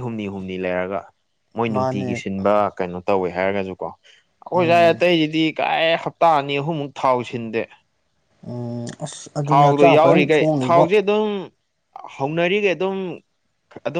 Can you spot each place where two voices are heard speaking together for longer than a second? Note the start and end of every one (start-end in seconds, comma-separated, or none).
9.5-10.9